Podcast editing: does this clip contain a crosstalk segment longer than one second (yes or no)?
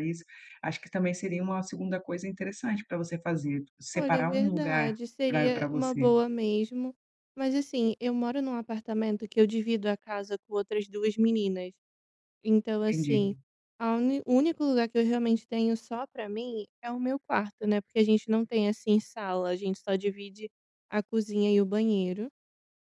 yes